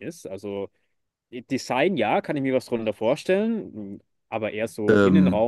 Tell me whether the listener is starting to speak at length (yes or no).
no